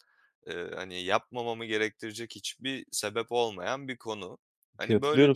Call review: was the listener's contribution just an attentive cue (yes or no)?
no